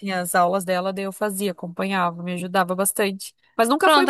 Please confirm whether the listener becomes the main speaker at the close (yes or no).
yes